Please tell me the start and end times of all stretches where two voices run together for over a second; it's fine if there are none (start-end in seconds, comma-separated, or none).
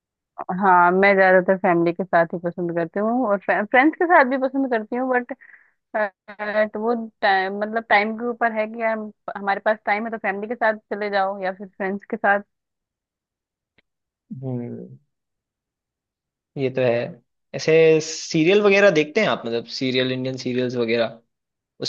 none